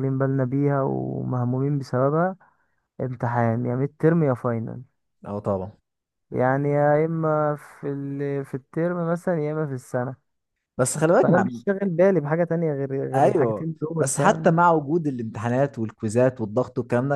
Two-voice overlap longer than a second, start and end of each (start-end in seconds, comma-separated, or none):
13.2-14.6